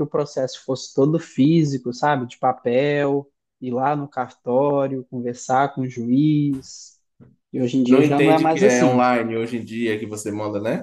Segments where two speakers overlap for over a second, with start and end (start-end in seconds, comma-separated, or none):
7.9-9.1